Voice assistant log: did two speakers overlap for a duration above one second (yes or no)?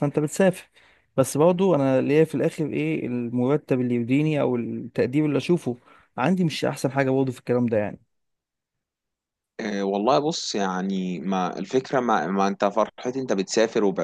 no